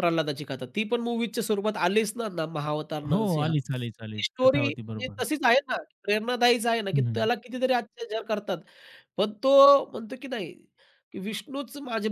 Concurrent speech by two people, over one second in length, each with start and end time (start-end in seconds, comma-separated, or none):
3.1-5.2